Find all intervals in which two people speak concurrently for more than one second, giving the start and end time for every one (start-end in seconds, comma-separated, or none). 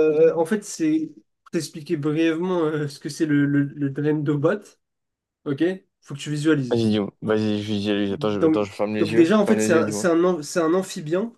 8.1-10.1